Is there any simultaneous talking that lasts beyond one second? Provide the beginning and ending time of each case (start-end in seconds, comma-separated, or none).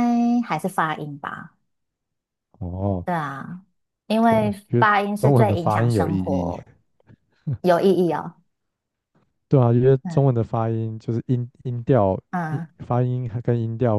4.3-6.5